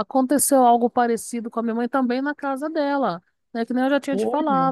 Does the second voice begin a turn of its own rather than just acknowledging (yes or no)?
no